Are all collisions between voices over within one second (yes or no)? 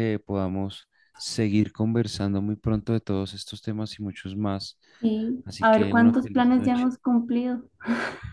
no